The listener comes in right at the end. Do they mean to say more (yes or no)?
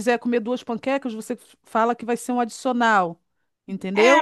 yes